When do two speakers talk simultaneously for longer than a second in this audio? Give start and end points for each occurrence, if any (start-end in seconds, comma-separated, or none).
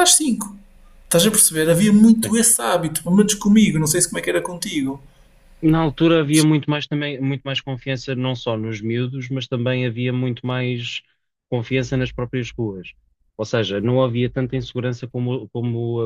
none